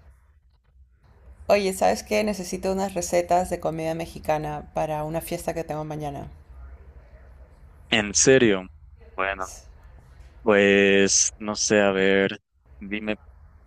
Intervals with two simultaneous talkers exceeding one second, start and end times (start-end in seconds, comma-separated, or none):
none